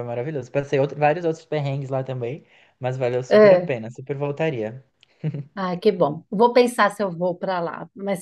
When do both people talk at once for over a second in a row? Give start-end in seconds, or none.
none